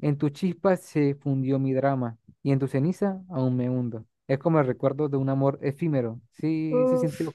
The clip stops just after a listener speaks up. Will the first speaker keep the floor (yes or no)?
no